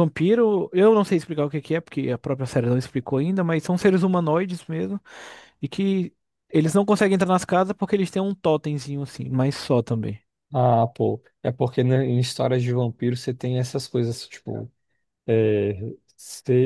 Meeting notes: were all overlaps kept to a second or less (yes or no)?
yes